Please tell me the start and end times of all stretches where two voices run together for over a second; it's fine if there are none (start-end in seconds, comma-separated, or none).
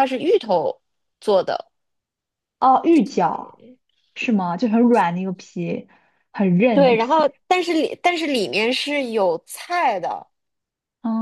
none